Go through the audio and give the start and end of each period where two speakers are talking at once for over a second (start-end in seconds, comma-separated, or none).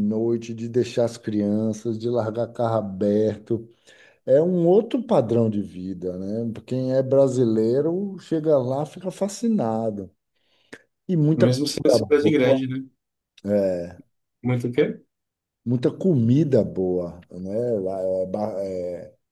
11.3-12.6